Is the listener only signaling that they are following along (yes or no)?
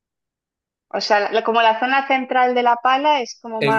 no